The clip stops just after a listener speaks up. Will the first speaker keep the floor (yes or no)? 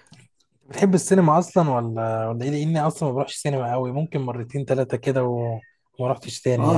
no